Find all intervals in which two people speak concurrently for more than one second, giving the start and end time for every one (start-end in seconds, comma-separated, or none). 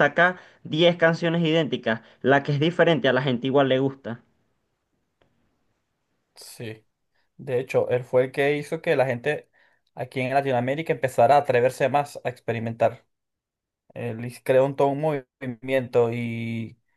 none